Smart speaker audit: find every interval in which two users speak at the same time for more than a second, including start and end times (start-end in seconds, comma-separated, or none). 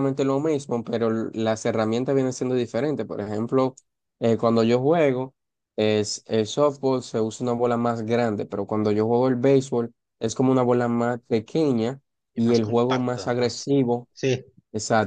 12.3-13.6